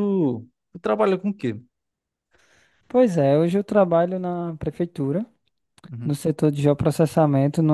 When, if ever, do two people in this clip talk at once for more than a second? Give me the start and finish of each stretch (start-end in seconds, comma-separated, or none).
none